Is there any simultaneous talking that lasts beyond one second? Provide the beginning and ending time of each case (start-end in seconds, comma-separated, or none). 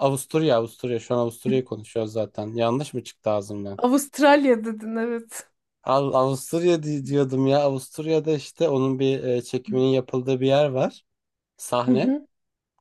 none